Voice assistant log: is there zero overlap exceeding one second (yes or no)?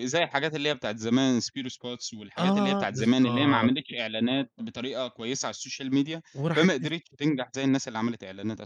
no